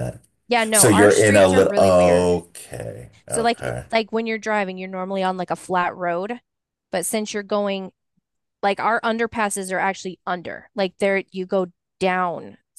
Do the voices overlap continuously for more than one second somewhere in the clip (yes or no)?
yes